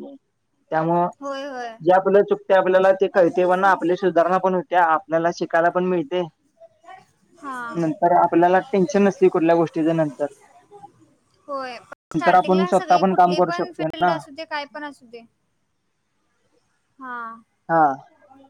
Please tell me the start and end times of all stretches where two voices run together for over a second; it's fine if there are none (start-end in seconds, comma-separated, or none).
12.2-14.1